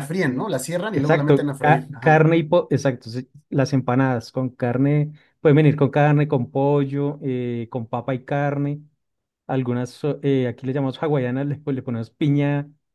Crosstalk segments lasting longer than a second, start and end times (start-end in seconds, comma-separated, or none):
0.9-2.2